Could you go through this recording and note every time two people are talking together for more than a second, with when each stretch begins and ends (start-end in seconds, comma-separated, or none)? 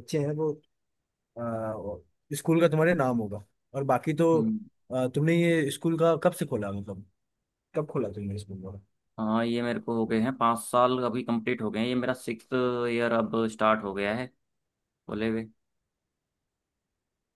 none